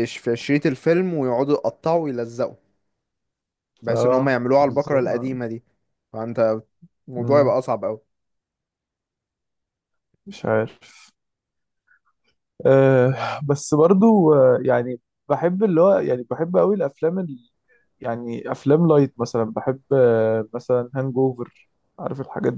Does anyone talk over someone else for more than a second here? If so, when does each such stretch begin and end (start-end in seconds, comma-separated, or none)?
3.9-5.4